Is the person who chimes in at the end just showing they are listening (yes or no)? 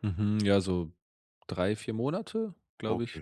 no